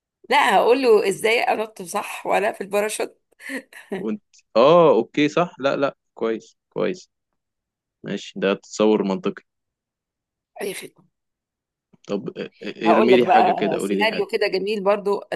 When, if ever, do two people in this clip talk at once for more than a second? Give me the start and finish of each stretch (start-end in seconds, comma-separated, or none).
12.8-14.3